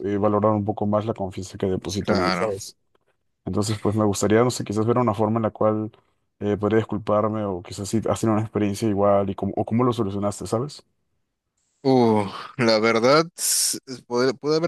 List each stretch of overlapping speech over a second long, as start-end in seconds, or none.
none